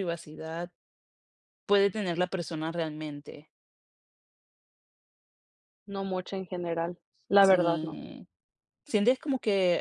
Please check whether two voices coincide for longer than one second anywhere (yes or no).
no